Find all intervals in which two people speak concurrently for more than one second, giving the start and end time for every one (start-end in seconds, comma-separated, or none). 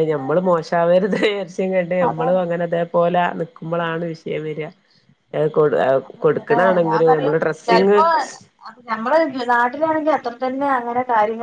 6.2-8.0